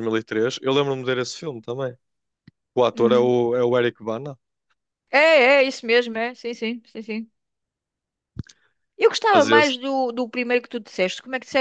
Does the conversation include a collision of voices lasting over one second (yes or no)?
no